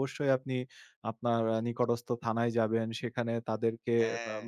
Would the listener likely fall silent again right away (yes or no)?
yes